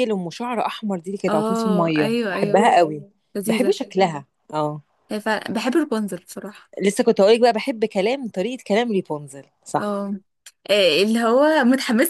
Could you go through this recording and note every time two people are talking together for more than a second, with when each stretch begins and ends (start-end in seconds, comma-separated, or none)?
1.3-2.7